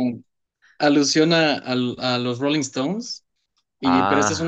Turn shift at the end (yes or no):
no